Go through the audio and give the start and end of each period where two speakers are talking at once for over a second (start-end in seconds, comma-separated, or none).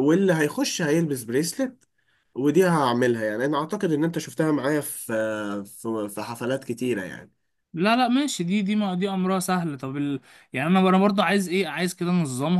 none